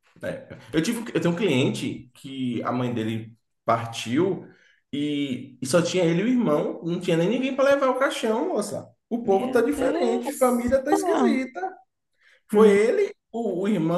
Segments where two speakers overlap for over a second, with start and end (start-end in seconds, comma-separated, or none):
9.2-11.4